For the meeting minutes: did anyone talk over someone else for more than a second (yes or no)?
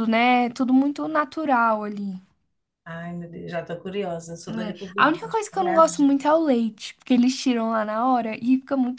yes